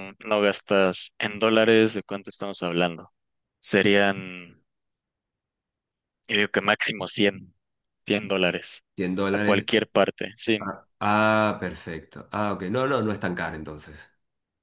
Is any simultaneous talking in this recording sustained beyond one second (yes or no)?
no